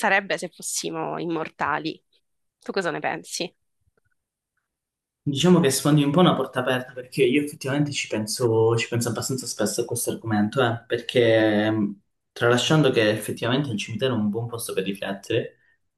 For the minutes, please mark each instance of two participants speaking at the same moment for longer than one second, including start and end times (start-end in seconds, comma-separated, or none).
none